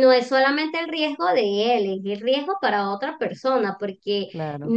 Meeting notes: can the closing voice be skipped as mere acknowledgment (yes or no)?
yes